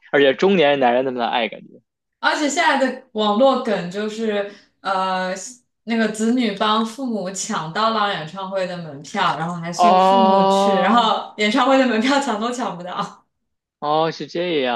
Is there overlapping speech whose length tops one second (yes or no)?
yes